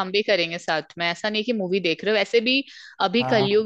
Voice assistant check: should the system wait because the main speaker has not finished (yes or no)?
yes